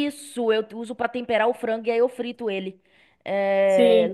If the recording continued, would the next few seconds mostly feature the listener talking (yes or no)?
no